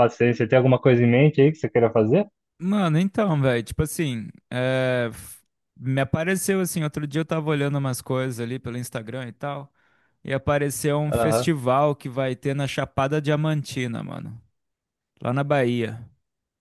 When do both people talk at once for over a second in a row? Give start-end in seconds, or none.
none